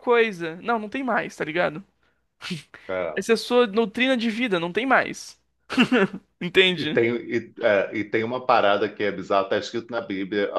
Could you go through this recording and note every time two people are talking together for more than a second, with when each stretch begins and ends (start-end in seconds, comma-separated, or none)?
none